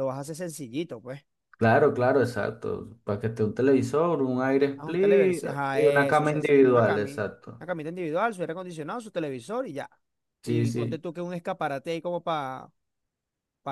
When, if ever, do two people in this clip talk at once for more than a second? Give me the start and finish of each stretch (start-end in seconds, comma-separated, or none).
4.8-7.7